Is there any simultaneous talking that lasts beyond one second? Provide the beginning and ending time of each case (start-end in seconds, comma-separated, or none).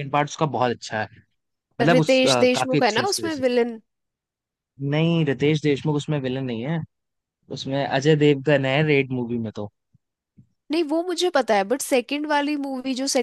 1.9-3.4